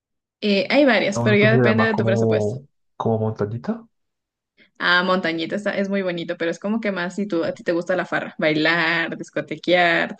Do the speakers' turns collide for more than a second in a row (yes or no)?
yes